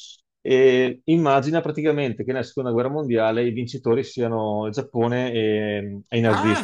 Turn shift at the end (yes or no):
yes